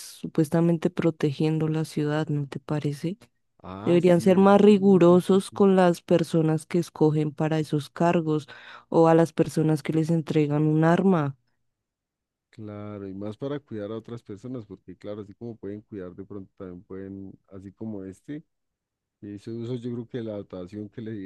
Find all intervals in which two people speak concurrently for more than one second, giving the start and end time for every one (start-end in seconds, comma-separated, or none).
3.8-5.6